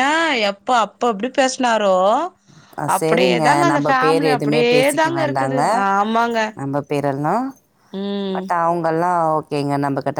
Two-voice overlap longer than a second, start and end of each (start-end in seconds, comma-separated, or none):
3.0-5.1